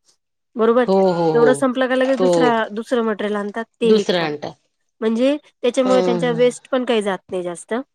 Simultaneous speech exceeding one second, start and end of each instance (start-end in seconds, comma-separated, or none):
0.9-2.4